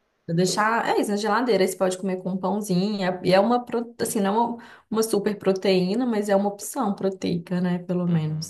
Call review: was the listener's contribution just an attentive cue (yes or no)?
no